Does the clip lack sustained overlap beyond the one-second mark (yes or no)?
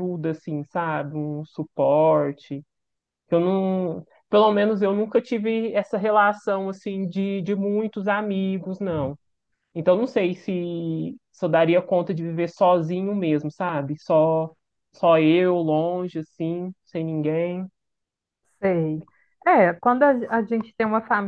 yes